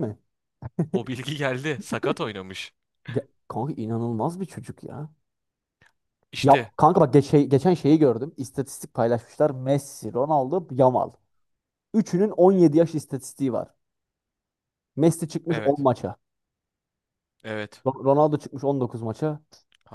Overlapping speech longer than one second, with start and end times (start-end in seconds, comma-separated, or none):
none